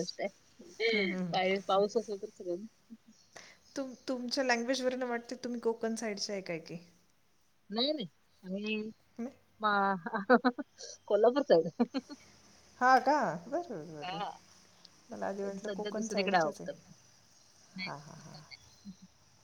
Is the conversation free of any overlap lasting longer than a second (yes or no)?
no